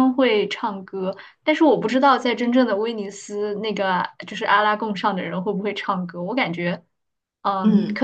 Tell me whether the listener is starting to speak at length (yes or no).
no